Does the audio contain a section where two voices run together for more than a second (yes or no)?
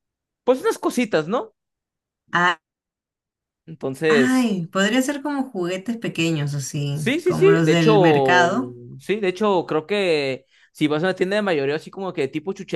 yes